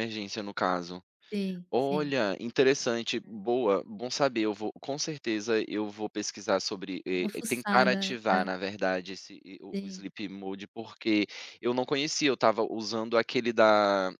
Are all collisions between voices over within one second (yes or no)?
no